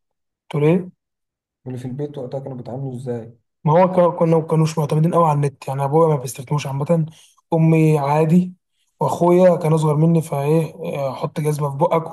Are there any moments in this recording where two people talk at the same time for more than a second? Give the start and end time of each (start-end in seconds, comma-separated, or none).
none